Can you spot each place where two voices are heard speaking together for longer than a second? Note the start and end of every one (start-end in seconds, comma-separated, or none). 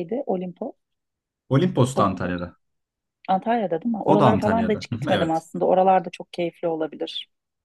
4.1-5.4